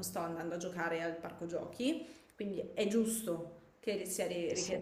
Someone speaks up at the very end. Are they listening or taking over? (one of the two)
listening